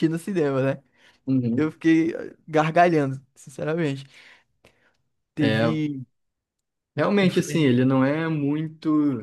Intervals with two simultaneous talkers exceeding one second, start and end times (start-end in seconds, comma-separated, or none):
none